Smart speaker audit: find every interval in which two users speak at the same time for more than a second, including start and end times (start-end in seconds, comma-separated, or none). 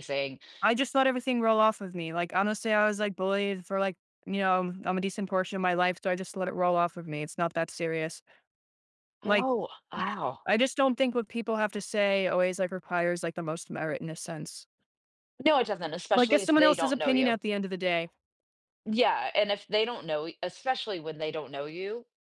16.1-17.4